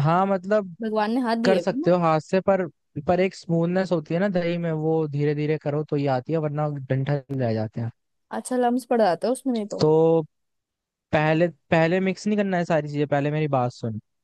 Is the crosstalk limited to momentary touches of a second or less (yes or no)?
yes